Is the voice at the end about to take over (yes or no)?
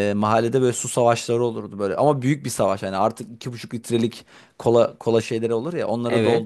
no